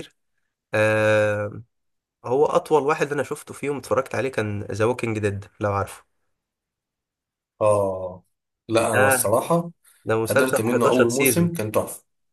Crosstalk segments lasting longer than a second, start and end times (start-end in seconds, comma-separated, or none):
10.3-11.5